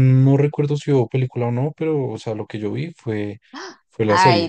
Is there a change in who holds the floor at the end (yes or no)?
yes